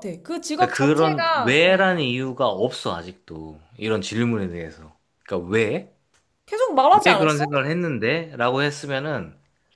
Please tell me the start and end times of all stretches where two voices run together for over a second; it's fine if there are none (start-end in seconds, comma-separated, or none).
0.6-1.9